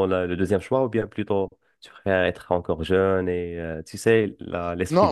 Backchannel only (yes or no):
no